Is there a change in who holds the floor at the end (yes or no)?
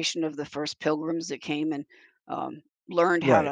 no